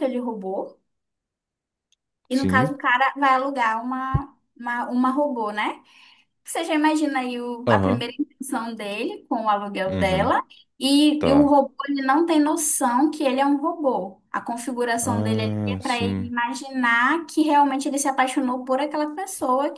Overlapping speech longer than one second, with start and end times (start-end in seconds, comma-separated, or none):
15.0-16.3